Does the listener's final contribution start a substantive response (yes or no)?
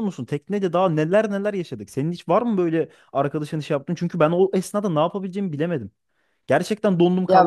yes